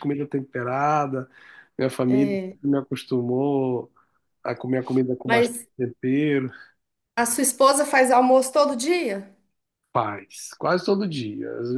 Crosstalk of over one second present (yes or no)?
no